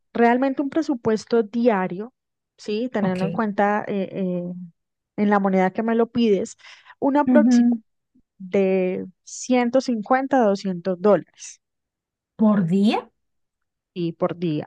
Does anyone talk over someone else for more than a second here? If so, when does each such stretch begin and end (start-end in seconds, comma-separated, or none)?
none